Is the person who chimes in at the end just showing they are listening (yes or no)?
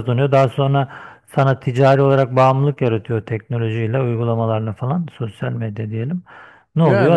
yes